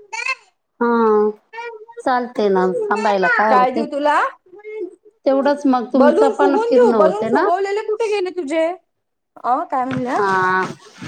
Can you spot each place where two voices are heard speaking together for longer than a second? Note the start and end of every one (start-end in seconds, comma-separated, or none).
6.0-7.5